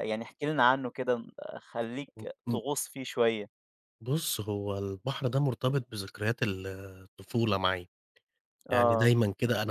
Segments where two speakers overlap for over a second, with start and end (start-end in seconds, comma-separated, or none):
none